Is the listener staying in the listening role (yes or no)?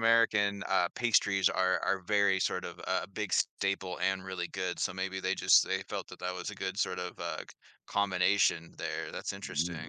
no